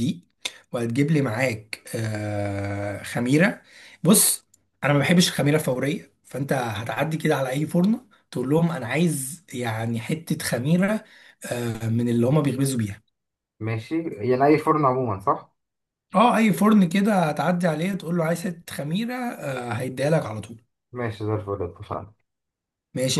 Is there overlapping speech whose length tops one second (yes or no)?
no